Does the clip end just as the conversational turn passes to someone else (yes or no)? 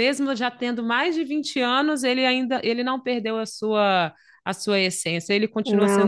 yes